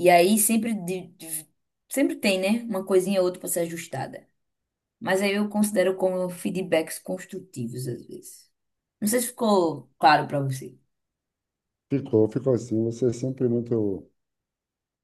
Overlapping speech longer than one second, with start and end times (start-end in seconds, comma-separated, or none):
none